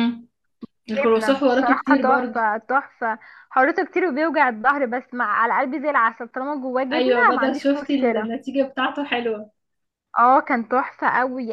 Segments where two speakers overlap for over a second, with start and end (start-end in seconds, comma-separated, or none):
0.9-2.4, 6.9-8.3